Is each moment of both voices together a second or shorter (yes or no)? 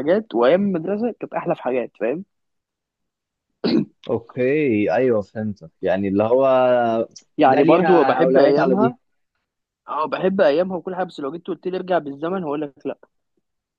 no